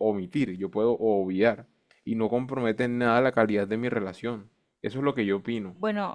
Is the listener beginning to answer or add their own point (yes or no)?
yes